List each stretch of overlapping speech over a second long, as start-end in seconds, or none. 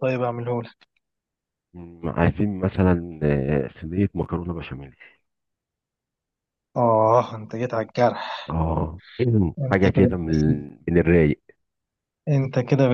none